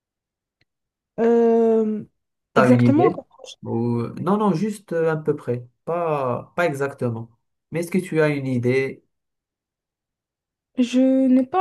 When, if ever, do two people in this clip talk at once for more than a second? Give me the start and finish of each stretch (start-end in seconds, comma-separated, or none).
none